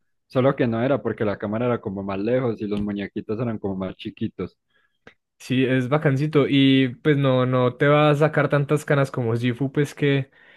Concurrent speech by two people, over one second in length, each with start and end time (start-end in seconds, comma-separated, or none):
none